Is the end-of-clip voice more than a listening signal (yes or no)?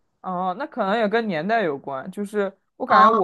no